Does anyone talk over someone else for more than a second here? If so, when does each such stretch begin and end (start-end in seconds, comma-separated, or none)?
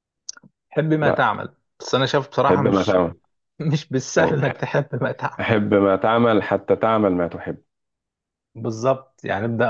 none